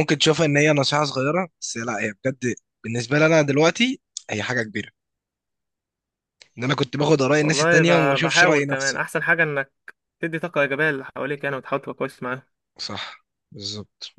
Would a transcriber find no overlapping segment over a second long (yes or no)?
no